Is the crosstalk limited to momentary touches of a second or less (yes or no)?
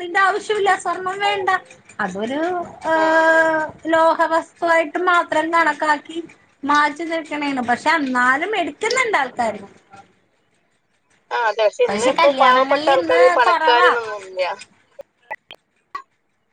no